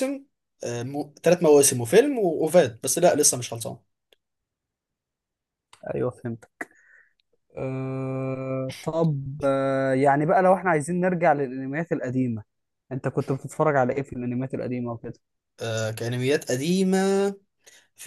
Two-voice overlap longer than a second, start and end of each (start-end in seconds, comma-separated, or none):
none